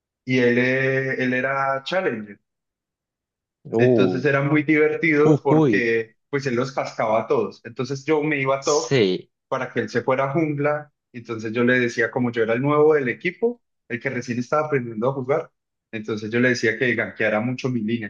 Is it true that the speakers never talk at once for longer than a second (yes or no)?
yes